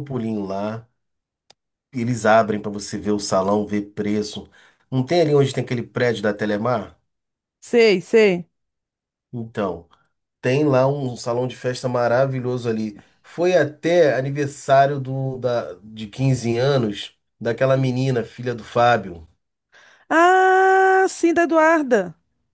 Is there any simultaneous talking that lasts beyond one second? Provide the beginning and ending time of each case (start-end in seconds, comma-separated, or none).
none